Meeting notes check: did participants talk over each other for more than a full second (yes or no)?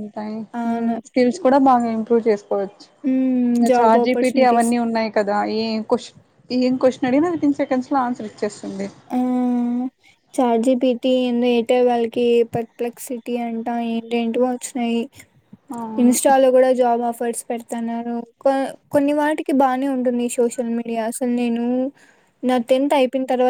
yes